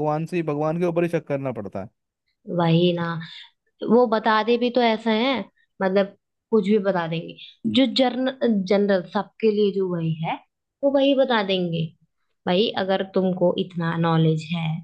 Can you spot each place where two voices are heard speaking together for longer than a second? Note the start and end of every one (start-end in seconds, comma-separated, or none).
none